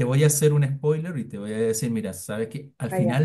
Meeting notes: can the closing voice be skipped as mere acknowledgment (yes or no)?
yes